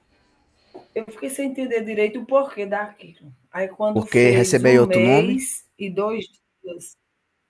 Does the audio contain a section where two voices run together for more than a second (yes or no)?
yes